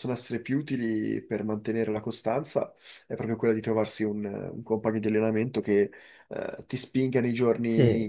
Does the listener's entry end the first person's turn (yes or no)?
no